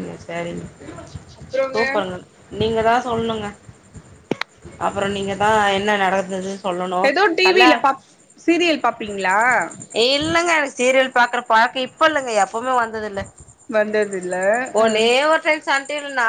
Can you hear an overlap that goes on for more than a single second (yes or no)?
no